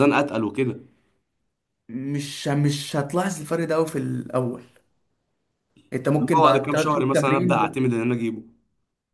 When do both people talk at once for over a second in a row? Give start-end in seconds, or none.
6.2-7.8